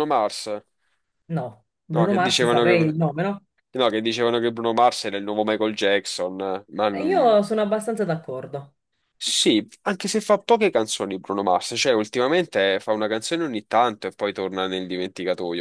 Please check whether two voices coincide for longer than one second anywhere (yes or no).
yes